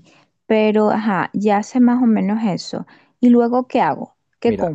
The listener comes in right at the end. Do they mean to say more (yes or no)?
yes